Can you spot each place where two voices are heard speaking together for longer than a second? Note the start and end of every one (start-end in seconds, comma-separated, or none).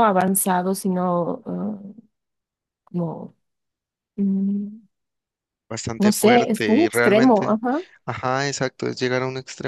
6.0-7.6